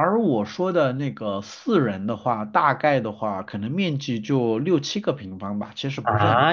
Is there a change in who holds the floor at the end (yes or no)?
yes